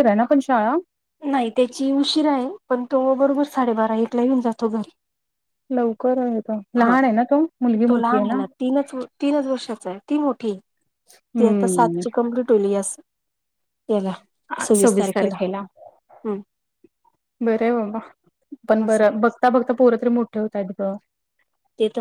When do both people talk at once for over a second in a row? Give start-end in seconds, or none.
none